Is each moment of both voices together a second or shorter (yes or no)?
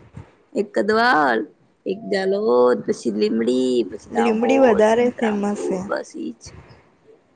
no